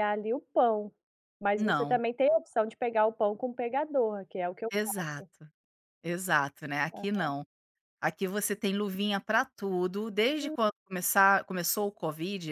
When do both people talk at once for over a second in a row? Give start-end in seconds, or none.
none